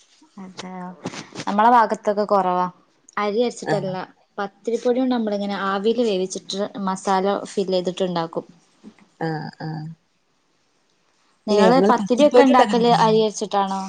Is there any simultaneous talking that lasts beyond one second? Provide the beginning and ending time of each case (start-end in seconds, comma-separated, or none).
11.5-13.2